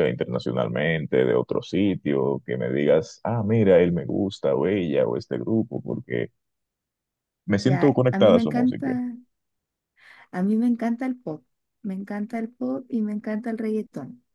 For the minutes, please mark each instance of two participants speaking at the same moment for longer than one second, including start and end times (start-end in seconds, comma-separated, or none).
7.6-8.9